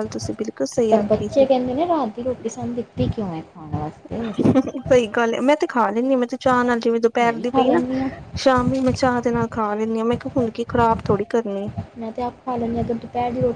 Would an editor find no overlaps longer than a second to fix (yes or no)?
yes